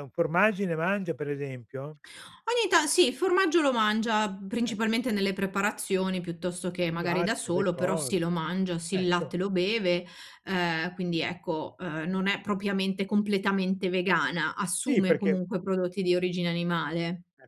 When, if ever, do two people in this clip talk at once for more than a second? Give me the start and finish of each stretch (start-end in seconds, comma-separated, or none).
6.9-8.2